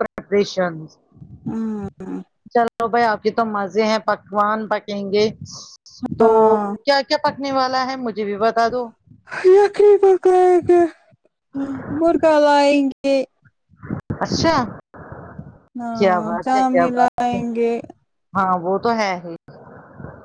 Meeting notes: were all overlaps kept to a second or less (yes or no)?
no